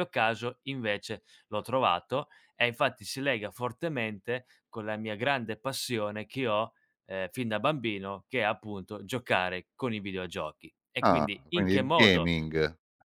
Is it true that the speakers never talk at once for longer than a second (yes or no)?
no